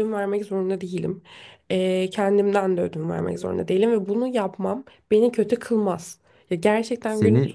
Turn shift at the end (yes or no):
no